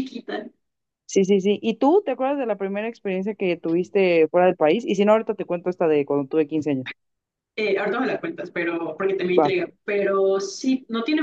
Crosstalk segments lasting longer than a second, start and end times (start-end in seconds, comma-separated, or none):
none